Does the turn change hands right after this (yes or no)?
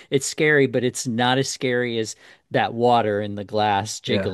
no